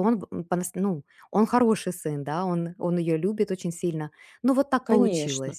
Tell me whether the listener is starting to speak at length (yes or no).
yes